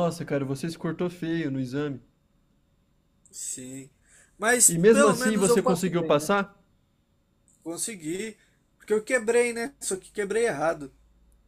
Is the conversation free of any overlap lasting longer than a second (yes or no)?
no